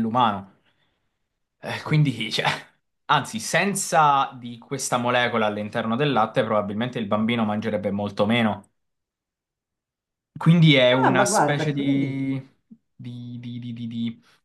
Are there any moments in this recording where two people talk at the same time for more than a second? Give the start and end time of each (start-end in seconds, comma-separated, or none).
11.0-12.3